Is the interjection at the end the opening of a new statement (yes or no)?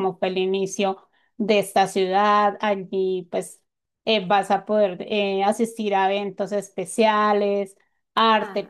yes